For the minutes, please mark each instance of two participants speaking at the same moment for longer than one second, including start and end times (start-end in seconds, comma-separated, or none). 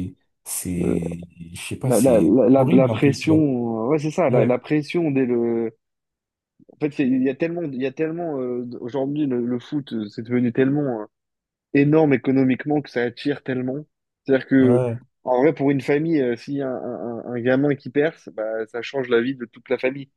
1.8-3.4